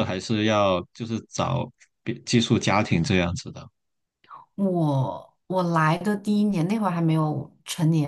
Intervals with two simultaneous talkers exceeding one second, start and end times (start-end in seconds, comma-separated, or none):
none